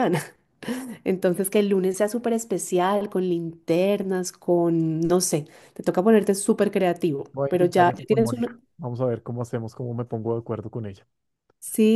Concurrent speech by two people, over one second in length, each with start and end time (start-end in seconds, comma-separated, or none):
7.3-8.6